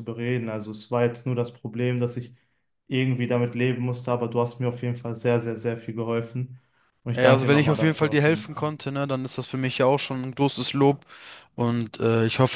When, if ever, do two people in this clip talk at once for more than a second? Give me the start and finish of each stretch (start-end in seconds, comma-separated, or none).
7.1-8.7